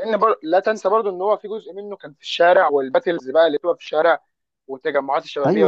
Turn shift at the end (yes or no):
yes